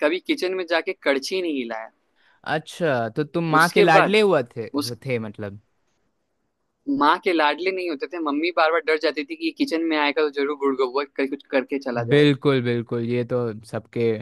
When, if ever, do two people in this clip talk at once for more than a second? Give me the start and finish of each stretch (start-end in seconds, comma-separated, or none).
none